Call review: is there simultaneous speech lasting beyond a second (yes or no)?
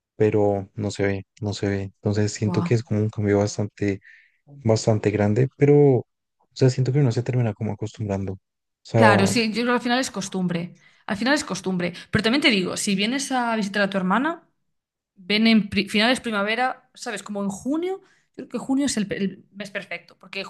no